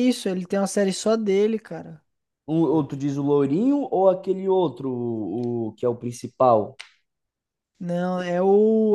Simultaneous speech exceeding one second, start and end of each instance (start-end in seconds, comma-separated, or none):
none